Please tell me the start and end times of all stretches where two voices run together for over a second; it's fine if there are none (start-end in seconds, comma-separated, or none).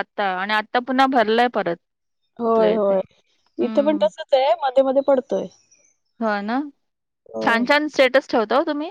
none